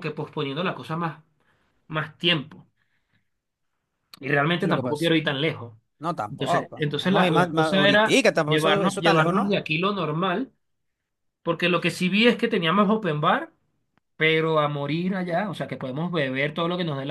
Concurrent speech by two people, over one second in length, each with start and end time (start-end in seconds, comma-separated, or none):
6.3-9.6